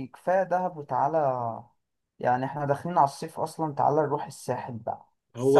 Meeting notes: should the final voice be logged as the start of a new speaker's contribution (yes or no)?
yes